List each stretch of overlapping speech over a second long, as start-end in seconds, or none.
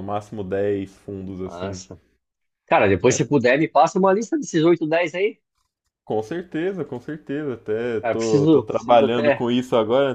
8.0-9.5